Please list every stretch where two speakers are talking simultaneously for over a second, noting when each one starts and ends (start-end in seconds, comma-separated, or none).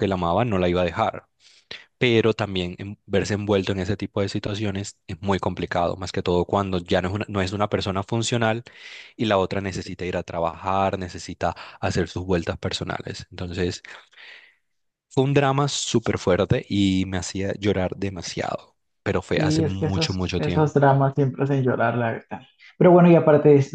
19.4-20.7